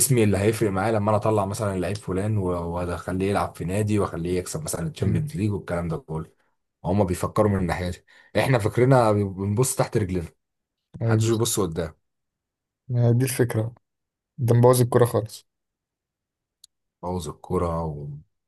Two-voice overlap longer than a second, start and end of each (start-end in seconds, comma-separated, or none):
none